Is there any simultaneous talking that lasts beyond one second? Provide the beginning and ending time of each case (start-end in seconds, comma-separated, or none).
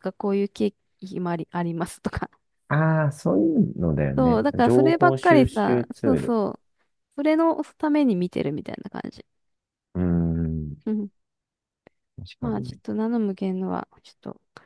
4.2-6.4